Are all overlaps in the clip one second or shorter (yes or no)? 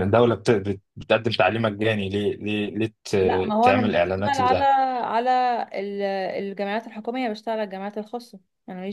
no